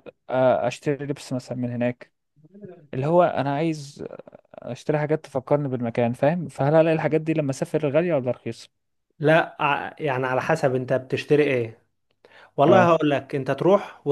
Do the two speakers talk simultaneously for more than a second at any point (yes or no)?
no